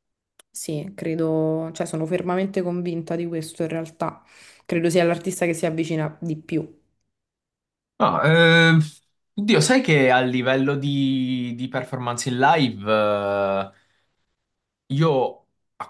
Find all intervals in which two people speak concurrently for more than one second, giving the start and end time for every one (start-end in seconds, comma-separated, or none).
none